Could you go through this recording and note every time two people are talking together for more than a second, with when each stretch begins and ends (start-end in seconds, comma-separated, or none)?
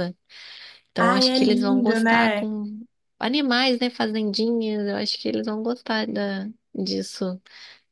1.0-2.5